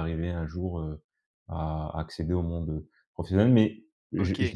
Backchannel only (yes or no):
yes